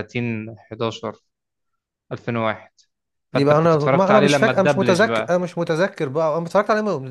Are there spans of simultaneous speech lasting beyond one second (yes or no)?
yes